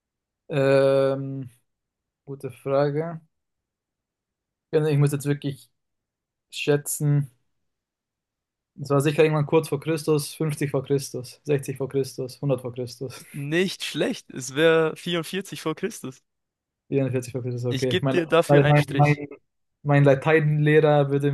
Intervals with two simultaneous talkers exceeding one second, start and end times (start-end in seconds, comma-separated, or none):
17.7-19.2